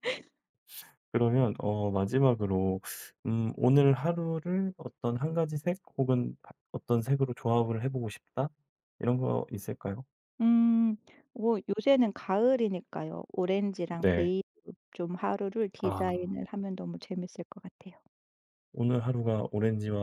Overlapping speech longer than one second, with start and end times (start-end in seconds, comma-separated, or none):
none